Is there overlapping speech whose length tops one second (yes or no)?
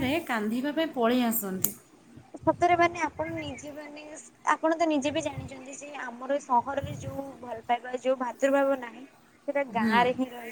no